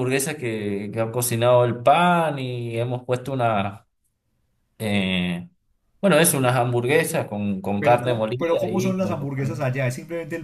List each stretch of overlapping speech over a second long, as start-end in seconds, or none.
7.8-9.7